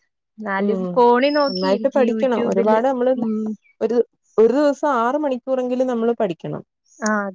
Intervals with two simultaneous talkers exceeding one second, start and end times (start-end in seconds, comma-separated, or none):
1.5-2.8